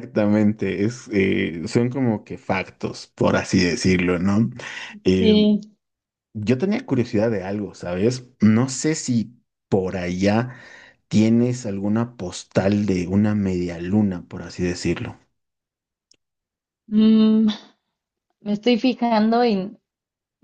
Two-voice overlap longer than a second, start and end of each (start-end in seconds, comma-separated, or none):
none